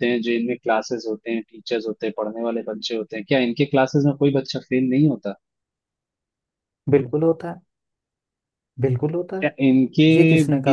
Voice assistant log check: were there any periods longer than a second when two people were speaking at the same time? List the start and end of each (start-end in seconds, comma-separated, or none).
none